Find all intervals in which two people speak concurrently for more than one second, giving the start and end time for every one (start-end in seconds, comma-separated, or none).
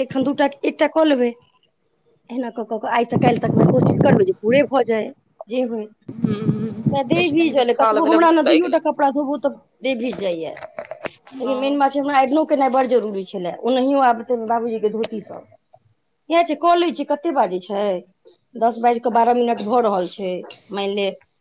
7.0-8.8